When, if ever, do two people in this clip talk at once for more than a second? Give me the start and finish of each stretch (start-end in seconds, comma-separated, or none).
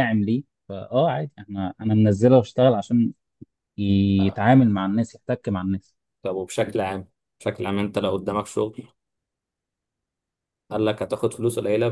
none